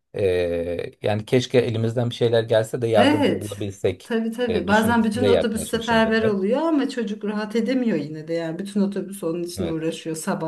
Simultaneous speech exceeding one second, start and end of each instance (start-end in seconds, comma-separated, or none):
3.0-6.4